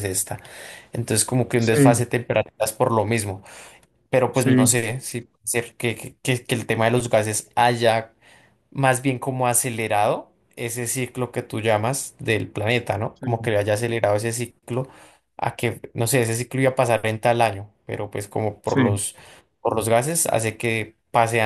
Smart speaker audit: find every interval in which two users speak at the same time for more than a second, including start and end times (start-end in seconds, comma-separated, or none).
none